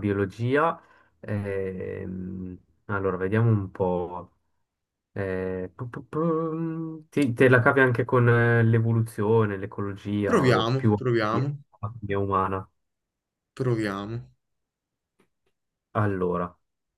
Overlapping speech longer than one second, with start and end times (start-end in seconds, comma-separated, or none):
10.2-11.6